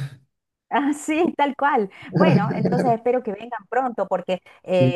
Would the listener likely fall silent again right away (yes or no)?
yes